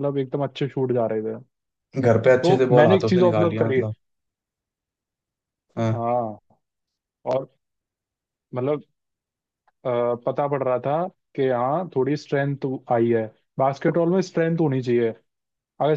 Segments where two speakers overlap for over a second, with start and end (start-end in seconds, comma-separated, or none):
2.4-3.8